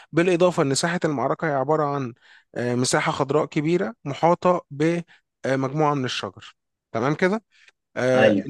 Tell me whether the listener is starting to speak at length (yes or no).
no